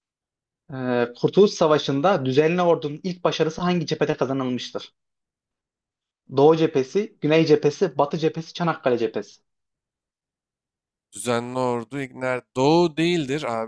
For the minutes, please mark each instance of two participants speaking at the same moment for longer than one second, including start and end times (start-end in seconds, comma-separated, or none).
none